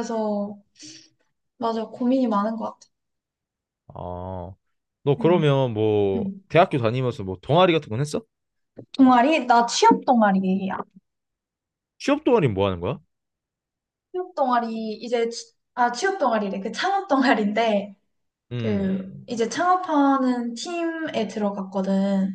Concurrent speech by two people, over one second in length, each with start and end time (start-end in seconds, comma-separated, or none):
none